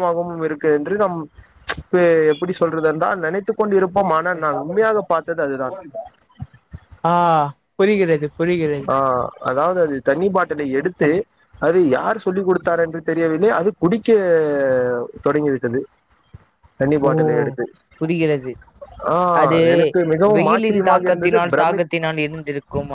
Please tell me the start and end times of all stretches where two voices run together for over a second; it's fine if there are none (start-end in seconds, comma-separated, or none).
20.3-21.9